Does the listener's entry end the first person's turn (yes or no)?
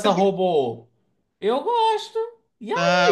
yes